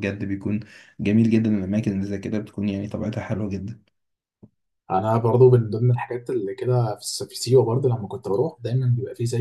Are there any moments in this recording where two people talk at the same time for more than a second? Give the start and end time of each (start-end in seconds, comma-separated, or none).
none